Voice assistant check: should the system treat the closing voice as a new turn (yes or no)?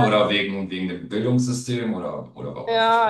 yes